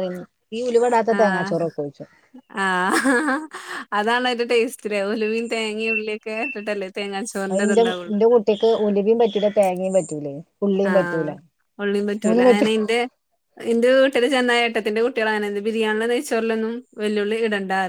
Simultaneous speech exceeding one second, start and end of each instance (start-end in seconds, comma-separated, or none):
none